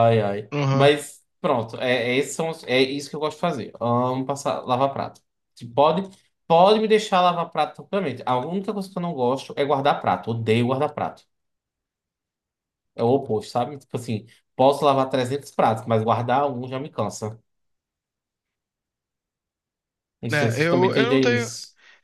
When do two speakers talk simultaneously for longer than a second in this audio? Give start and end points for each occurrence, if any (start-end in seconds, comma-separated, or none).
20.3-21.5